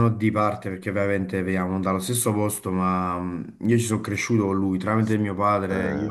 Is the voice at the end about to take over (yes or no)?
no